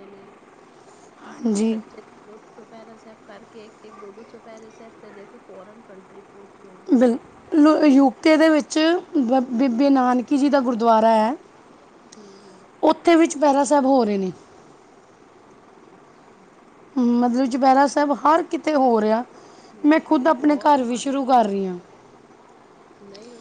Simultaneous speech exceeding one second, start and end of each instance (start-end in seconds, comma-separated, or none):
19.9-21.6